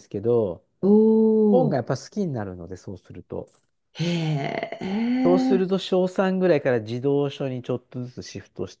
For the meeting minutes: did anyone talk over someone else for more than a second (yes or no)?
no